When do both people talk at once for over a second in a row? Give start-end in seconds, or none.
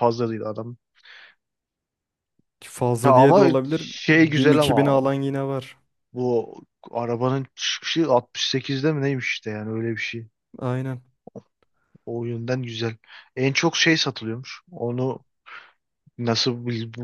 3.0-5.1